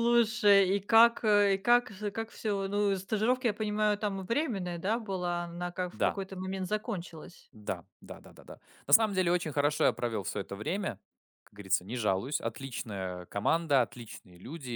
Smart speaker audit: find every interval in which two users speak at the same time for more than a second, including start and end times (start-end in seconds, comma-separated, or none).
none